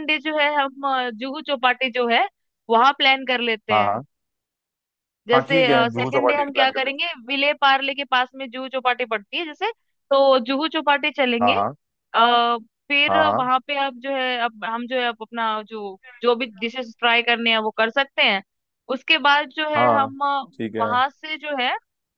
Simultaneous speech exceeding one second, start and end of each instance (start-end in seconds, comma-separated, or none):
5.3-7.1